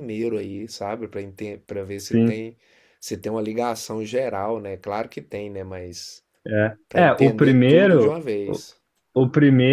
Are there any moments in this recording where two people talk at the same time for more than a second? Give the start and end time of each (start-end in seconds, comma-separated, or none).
6.9-8.2